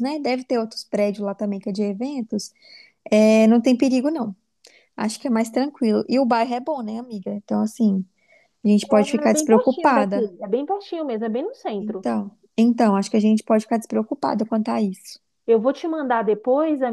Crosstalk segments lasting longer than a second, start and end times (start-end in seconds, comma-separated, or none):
9.0-10.3